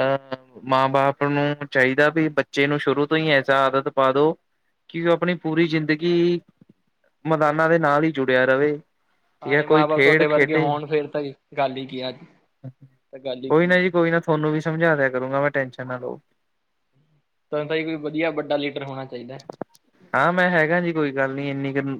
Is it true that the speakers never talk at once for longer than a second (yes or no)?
no